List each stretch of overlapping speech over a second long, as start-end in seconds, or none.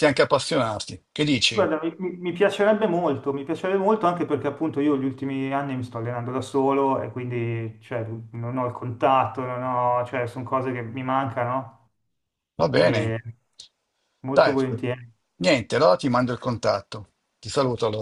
none